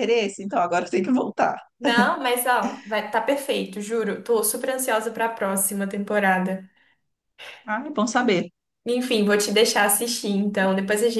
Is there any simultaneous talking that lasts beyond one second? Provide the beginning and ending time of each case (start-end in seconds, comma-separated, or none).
none